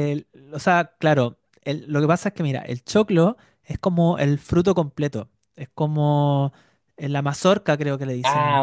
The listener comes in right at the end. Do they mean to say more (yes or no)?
yes